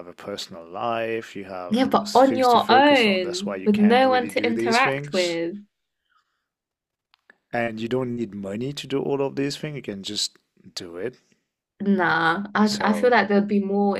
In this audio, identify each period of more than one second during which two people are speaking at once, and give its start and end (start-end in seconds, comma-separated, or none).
1.7-5.4